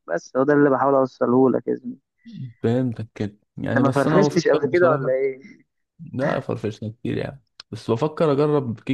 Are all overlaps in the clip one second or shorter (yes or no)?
no